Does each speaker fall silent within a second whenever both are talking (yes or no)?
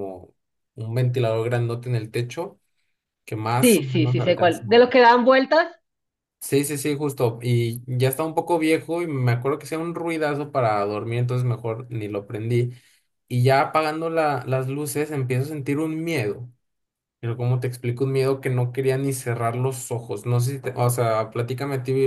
no